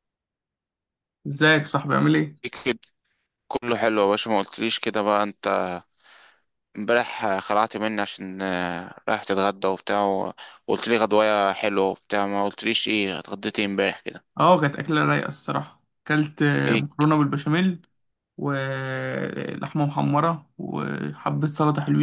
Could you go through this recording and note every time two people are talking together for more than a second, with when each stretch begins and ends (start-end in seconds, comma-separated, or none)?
none